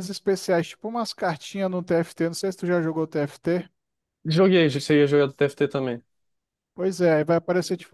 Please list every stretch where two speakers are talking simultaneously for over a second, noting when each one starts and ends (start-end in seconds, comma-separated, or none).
none